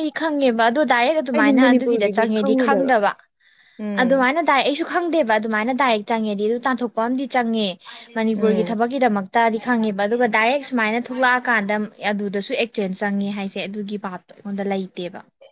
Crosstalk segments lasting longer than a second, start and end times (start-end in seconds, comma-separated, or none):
1.3-2.9